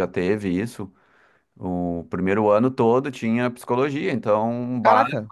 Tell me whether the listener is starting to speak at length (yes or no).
no